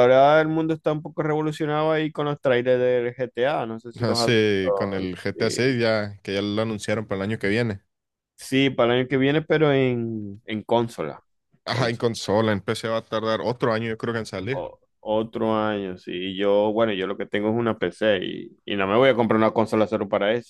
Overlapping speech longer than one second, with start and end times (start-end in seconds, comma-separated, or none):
4.0-5.8